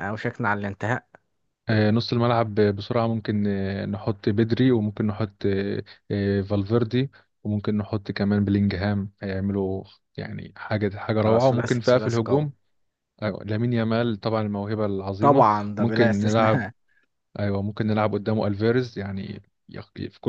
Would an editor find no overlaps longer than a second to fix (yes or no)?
no